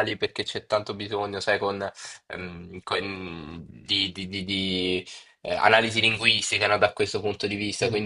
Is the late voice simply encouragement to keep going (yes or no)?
yes